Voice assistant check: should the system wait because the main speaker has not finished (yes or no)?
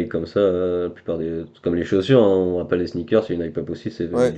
no